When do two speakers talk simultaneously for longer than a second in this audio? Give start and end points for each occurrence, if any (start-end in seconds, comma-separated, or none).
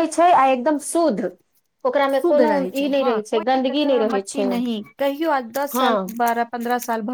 2.1-4.5